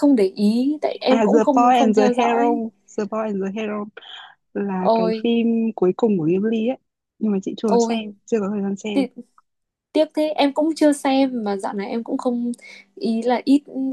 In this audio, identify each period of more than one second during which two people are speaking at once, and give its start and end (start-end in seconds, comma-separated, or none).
1.1-2.6